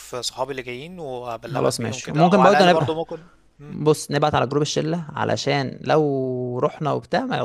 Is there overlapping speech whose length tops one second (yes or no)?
yes